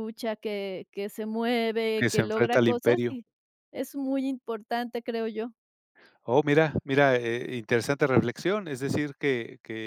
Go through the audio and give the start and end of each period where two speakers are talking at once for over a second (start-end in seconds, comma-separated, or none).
1.9-3.1